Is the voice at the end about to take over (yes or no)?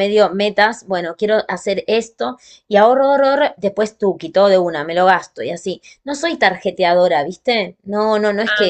no